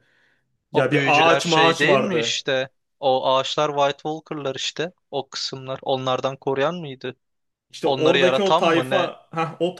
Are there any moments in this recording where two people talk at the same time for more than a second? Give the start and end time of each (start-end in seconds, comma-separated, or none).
0.7-2.4, 7.8-9.1